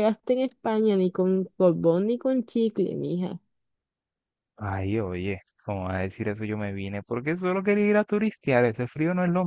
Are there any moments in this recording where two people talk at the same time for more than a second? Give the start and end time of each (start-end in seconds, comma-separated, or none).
none